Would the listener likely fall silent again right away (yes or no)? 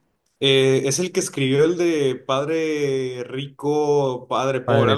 no